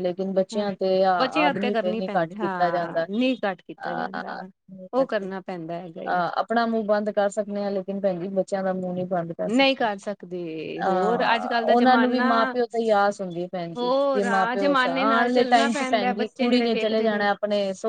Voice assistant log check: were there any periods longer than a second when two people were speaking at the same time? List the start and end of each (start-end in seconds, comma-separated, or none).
13.8-17.1